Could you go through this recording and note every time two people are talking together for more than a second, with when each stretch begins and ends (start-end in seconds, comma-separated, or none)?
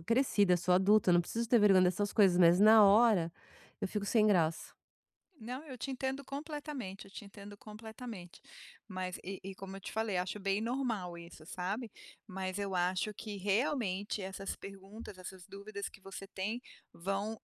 none